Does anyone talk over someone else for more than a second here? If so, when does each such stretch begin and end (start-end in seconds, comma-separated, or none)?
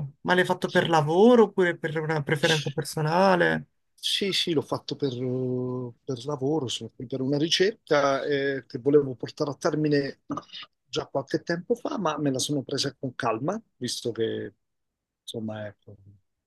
none